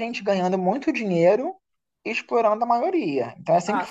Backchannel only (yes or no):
yes